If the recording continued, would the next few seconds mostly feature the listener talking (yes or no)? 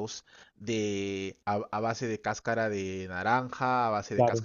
no